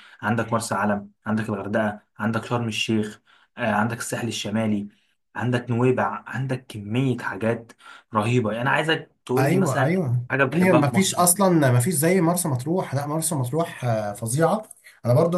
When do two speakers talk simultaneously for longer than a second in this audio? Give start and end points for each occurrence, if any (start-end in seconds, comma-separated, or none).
9.4-11.2